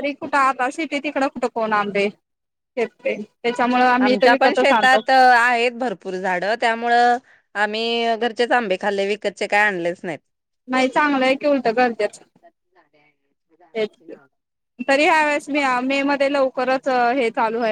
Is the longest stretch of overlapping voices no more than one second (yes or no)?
yes